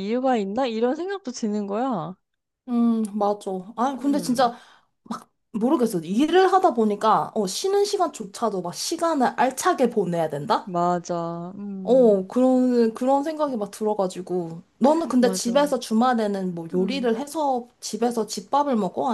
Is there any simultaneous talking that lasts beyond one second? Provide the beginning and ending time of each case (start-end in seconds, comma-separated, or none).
none